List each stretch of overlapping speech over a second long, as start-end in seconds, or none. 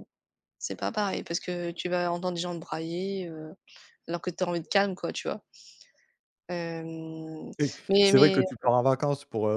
none